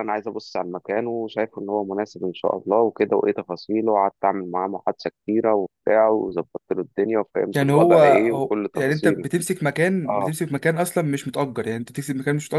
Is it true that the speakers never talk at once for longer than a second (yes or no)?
no